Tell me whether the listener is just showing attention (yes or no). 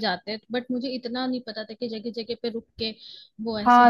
no